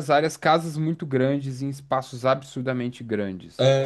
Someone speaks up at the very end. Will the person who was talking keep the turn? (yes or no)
no